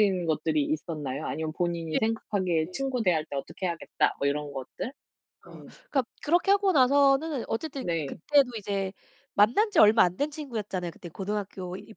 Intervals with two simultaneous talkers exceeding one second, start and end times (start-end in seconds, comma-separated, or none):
none